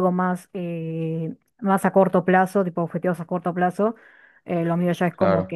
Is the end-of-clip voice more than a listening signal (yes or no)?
no